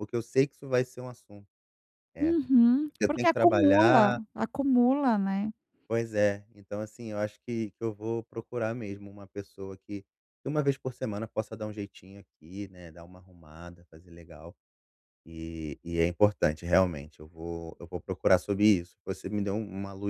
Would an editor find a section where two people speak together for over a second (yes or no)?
yes